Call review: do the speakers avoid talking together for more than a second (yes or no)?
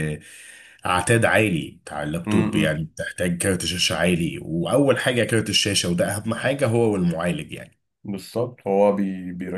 yes